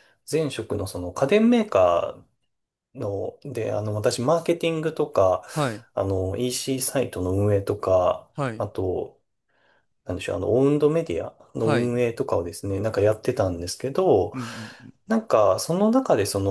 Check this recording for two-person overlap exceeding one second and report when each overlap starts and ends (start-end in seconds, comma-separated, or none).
none